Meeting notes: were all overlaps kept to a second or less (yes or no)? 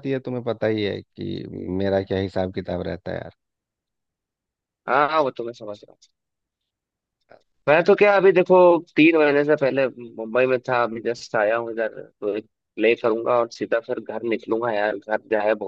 yes